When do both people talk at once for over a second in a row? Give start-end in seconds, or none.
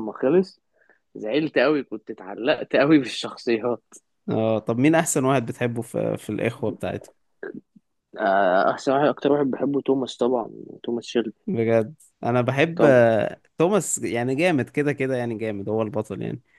none